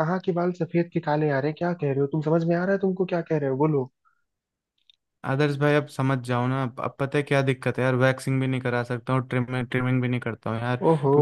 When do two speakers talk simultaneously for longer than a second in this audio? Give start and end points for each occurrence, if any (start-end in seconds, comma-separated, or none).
none